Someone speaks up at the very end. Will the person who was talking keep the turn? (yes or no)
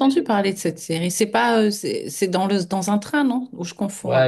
no